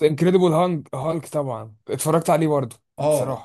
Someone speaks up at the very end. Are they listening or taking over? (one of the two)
taking over